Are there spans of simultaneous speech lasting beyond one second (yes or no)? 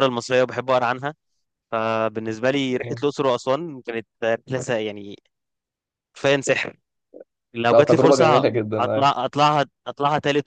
yes